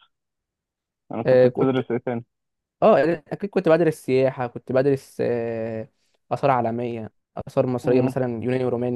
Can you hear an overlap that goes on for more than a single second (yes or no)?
no